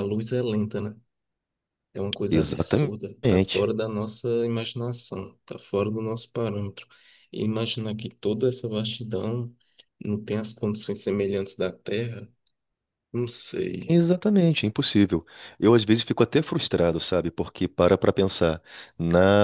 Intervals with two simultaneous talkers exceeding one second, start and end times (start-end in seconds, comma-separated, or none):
2.3-3.7